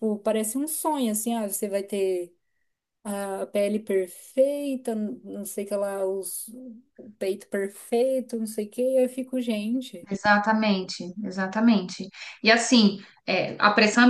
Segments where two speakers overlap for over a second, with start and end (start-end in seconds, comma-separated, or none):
none